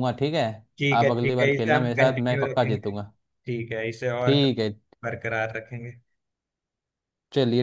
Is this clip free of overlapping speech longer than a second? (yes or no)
no